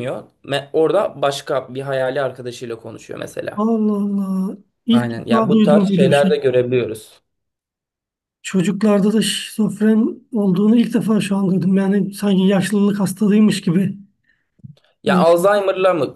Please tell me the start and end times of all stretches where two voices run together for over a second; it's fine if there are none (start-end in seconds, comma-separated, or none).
4.9-6.3